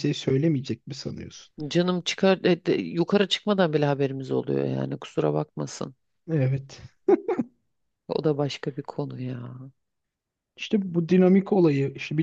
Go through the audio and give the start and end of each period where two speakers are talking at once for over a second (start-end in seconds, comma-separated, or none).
none